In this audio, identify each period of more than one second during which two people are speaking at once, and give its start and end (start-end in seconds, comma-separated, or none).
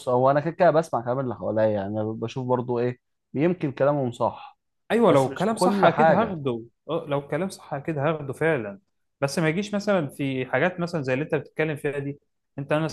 5.1-6.4